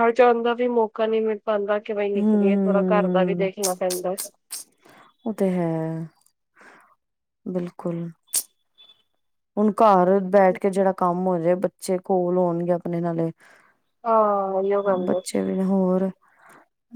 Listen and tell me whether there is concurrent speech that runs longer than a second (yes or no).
yes